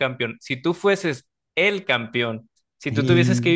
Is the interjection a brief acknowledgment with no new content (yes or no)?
yes